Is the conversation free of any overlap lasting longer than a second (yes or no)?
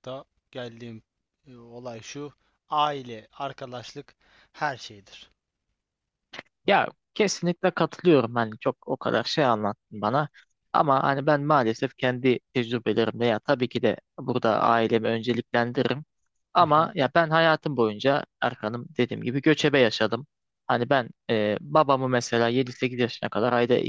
yes